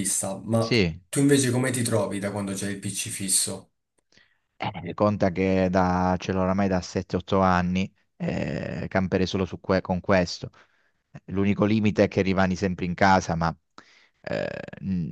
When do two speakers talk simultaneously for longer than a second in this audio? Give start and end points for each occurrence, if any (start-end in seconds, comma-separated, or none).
none